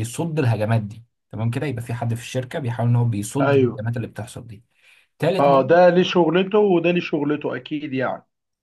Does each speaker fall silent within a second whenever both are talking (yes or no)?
yes